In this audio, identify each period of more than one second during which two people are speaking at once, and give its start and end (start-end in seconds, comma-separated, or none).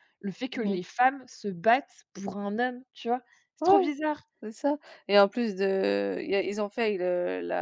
none